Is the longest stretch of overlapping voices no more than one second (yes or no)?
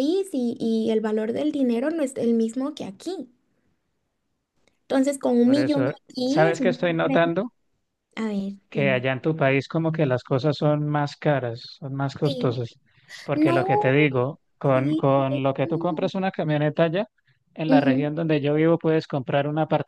no